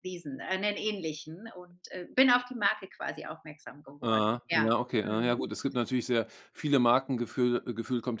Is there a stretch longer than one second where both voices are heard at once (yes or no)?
yes